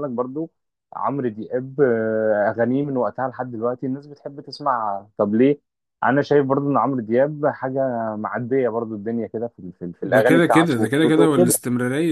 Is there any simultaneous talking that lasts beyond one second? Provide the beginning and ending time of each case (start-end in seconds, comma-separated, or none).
10.0-11.5